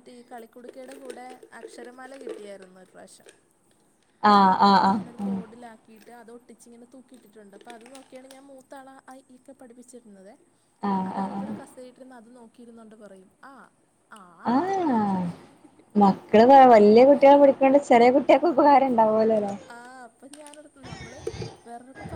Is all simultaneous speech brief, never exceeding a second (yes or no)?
yes